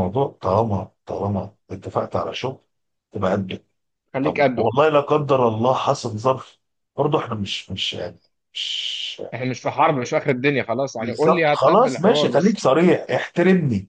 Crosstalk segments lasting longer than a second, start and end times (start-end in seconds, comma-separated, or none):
11.0-12.6